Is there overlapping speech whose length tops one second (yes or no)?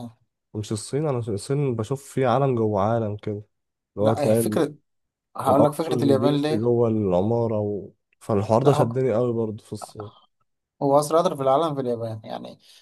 yes